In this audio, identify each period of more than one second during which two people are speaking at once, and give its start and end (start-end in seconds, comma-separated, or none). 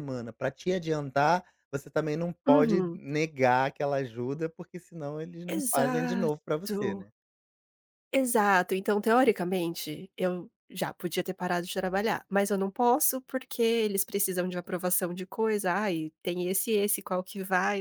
5.5-6.8